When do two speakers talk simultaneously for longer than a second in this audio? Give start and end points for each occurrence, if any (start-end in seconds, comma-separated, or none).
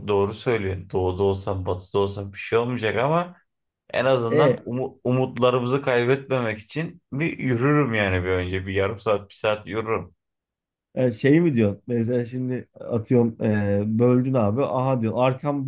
none